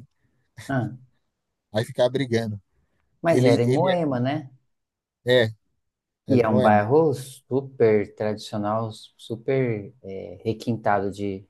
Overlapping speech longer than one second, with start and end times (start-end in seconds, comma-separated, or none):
none